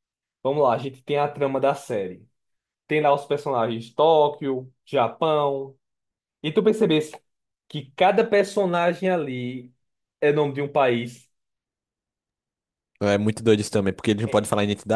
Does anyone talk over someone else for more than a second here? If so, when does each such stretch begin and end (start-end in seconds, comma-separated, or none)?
none